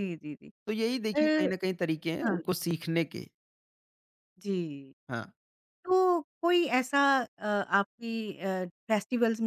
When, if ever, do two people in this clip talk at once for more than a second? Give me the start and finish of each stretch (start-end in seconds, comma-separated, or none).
none